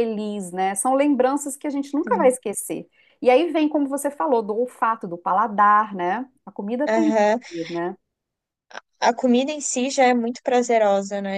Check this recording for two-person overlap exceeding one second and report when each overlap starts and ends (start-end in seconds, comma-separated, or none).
none